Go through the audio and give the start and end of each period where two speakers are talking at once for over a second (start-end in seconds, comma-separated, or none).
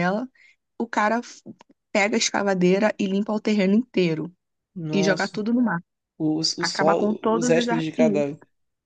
6.6-8.3